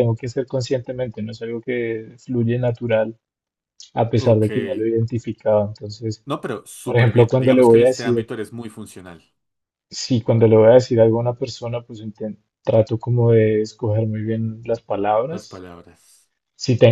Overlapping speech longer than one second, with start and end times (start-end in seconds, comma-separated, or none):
6.8-8.3